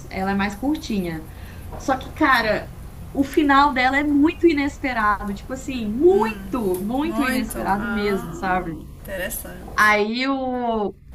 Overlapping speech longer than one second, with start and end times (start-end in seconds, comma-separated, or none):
7.0-8.3